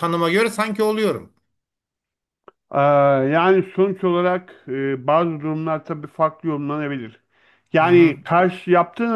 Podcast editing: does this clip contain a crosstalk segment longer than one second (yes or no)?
no